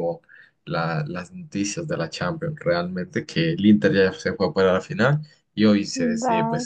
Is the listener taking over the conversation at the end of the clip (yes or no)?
no